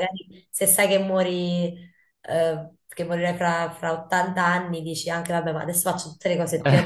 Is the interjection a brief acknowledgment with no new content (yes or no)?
no